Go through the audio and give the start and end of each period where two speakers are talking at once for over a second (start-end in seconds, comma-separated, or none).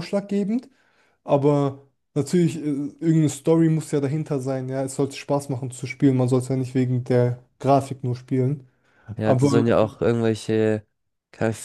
none